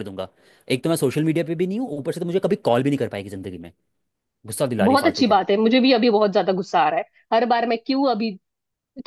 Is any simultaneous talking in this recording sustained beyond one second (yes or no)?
no